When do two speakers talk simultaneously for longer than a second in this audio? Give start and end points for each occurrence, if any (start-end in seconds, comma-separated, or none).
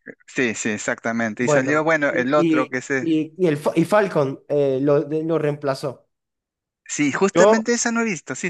1.4-3.1